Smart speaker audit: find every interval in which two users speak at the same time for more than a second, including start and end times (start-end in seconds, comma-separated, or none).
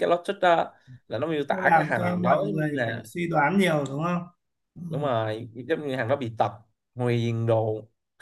1.5-3.0